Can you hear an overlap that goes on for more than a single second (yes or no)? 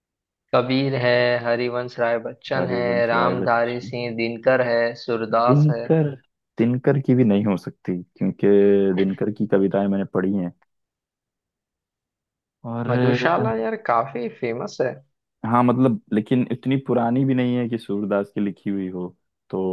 yes